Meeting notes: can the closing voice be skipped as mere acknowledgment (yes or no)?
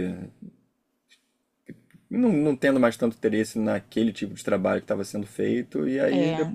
yes